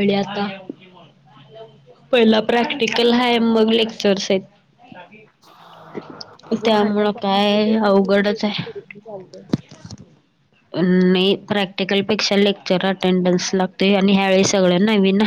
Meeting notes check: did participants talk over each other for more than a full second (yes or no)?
yes